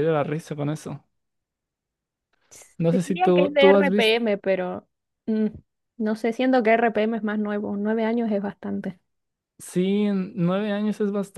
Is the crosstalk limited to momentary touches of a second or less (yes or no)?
no